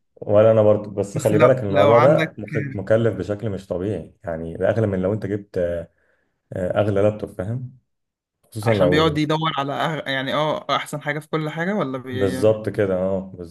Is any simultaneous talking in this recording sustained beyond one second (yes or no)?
yes